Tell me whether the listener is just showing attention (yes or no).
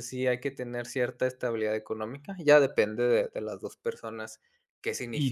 no